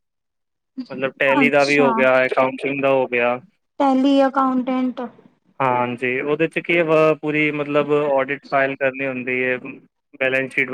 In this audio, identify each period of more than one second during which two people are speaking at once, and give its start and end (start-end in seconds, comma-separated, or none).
none